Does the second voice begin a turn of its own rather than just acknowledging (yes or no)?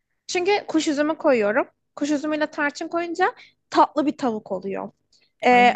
no